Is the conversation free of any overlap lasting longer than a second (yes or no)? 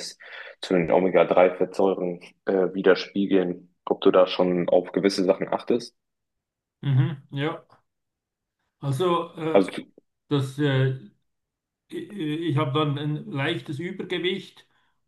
yes